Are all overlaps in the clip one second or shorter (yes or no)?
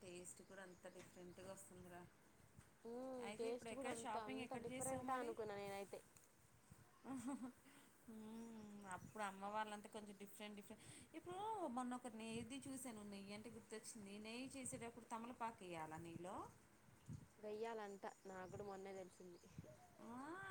no